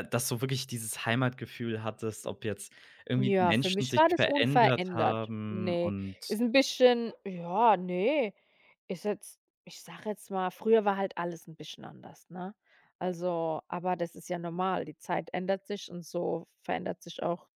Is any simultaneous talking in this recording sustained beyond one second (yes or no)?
yes